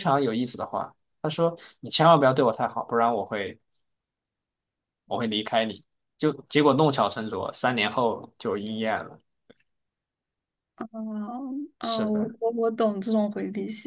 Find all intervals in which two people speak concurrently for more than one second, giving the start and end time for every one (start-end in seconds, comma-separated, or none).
none